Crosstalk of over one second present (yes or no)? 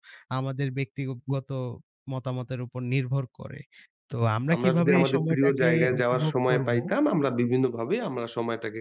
yes